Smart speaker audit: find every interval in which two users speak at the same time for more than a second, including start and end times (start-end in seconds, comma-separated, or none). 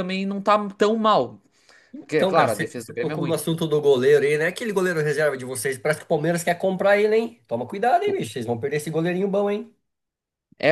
2.1-3.4